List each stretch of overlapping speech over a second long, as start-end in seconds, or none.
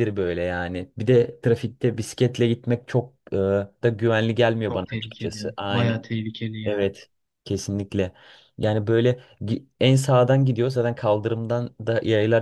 4.7-6.0